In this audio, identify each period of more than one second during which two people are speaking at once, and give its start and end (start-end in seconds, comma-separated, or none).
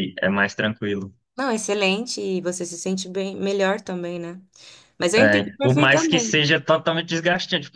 5.2-6.4